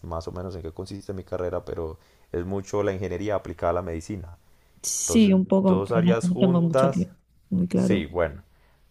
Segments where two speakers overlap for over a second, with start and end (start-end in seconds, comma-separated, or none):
5.0-7.1